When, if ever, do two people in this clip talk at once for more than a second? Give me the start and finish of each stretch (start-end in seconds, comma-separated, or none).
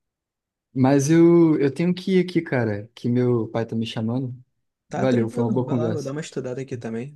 5.0-6.2